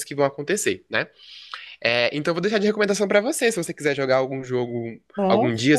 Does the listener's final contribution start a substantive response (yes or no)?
no